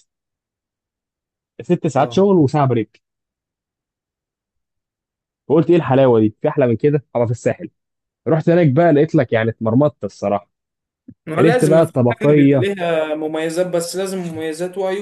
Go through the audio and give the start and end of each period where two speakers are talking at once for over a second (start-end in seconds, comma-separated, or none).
11.4-12.7